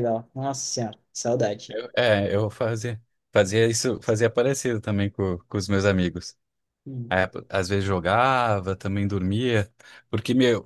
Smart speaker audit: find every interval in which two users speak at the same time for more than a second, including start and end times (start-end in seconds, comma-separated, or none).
none